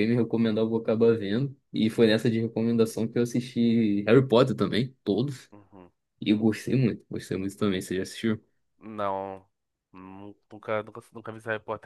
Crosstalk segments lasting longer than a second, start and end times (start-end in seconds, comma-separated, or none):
none